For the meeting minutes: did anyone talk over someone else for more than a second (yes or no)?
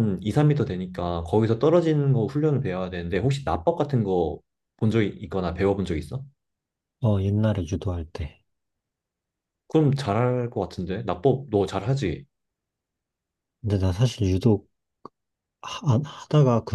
no